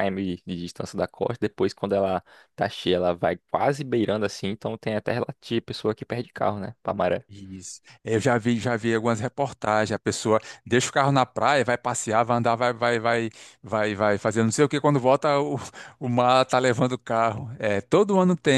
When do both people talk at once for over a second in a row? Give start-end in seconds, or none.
none